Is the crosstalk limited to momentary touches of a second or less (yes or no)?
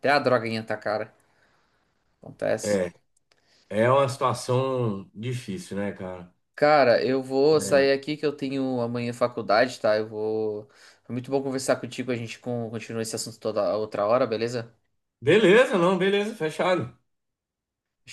yes